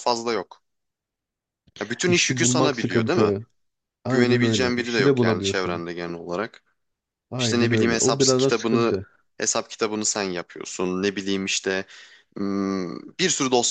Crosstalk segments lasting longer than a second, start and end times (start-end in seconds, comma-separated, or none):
2.0-3.3, 4.1-5.8, 7.4-8.9